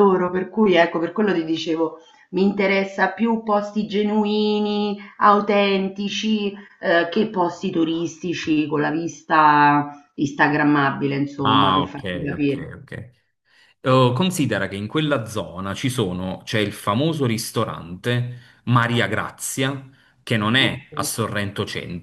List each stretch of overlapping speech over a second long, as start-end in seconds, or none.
11.4-12.7